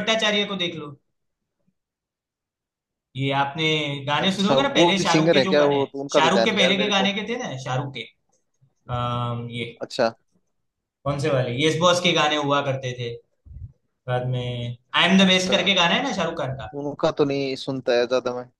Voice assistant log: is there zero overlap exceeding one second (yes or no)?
no